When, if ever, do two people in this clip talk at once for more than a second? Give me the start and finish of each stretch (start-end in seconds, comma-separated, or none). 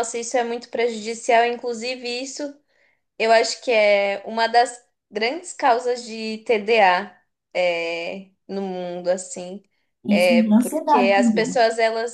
10.1-11.6